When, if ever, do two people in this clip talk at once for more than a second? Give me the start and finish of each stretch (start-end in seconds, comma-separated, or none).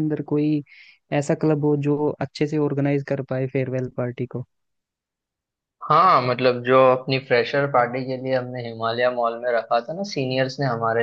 none